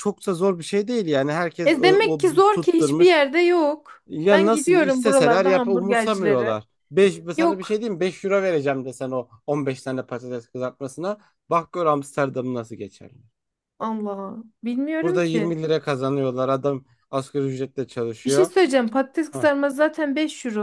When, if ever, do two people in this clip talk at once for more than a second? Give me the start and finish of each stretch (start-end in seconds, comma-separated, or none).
1.6-3.1, 4.1-6.6